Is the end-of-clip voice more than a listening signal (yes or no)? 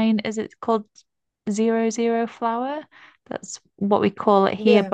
no